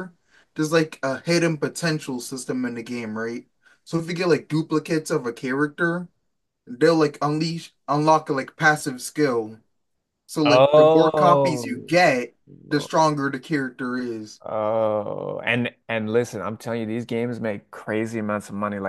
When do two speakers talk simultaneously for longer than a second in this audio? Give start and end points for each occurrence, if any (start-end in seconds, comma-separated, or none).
10.4-11.6